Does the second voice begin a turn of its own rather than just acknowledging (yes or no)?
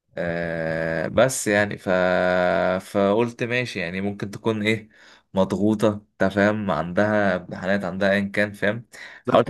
yes